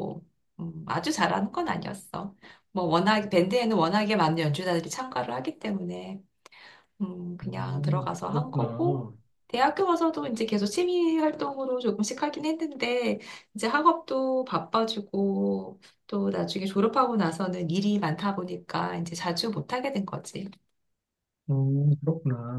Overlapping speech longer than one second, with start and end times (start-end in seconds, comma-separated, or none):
7.4-9.1